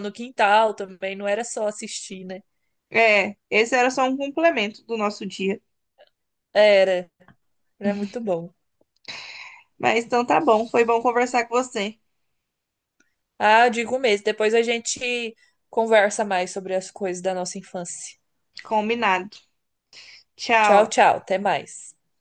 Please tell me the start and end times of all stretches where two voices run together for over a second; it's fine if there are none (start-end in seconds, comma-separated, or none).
none